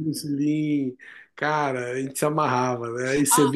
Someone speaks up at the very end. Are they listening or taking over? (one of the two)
listening